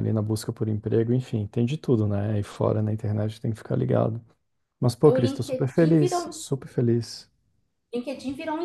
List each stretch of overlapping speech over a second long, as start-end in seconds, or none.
5.1-6.4